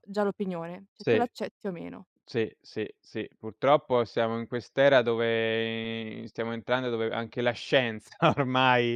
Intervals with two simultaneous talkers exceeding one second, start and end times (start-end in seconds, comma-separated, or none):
none